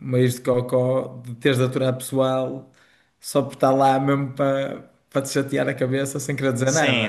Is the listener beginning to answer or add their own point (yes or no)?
yes